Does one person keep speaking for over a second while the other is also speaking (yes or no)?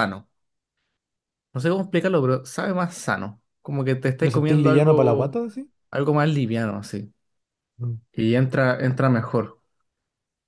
yes